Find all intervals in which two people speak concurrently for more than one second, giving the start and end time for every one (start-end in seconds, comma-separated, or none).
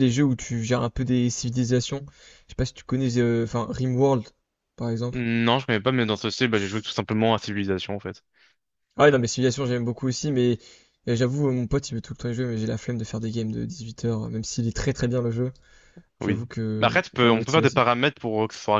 16.2-17.8